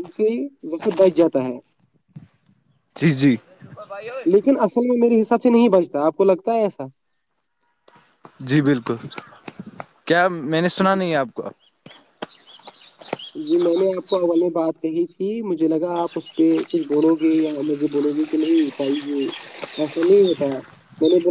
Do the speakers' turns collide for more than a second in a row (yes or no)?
no